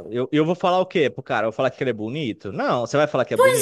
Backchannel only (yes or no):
yes